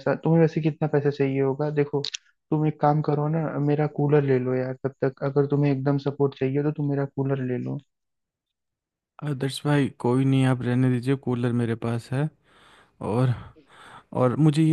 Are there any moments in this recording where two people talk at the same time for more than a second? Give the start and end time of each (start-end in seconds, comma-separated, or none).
none